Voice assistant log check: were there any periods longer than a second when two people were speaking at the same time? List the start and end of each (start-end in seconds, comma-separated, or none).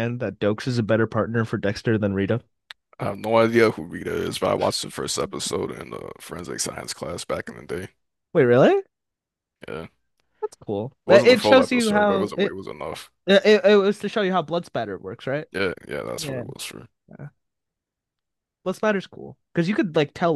11.1-12.6